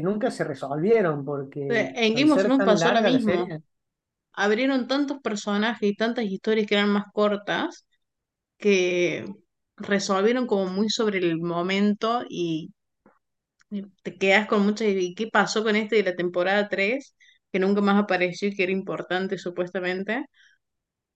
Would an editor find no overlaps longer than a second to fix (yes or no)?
no